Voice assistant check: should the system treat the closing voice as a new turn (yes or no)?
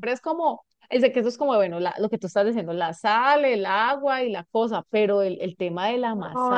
yes